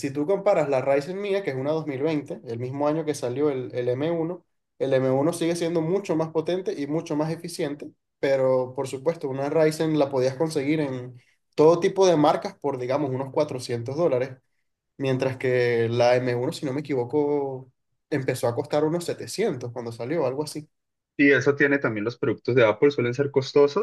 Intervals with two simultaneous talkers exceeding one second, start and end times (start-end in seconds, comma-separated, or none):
none